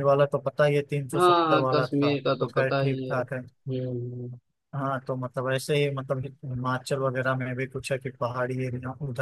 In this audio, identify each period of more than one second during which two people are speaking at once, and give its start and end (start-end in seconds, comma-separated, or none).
1.1-3.4